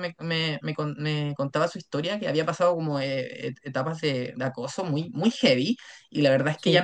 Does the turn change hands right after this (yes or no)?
no